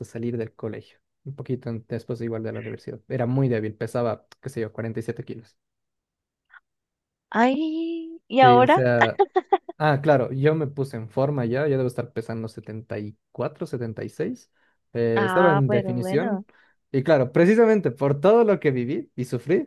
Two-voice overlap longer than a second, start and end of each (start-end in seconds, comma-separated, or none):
15.1-16.4